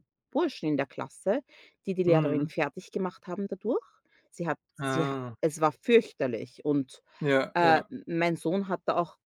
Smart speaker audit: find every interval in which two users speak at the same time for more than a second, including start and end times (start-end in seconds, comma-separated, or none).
none